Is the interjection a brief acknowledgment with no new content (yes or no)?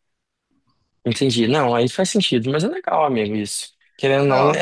yes